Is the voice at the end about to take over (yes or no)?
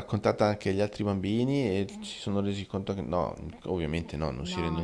yes